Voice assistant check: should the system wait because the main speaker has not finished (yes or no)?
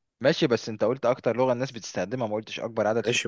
no